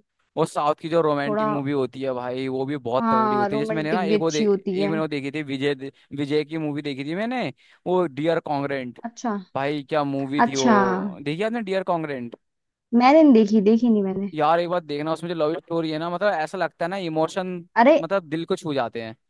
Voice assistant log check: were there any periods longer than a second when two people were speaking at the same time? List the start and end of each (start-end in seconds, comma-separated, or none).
3.0-4.9